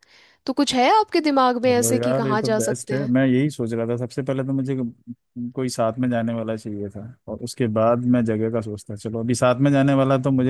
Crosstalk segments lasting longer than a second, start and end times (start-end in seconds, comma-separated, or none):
1.6-3.1